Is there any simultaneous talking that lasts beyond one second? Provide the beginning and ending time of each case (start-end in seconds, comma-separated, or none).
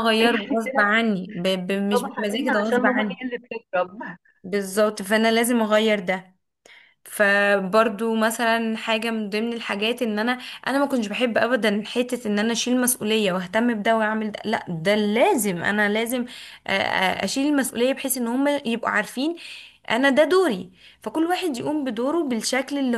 1.9-3.2